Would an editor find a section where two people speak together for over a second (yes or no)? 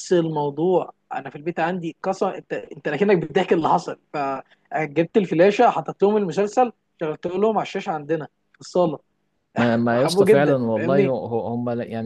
yes